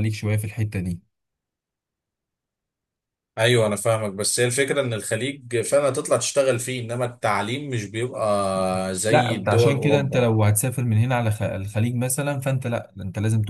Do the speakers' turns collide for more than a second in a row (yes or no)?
yes